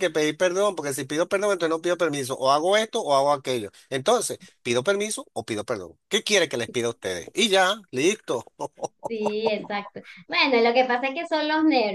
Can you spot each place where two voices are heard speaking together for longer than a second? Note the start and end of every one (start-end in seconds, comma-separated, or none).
none